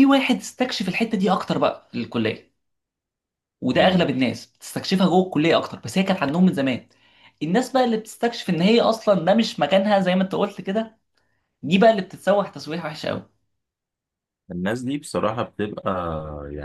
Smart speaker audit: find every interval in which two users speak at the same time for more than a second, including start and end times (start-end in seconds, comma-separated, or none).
none